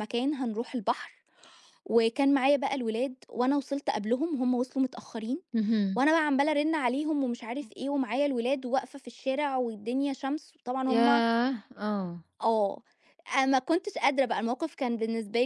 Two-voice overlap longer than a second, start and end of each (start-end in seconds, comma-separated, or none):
none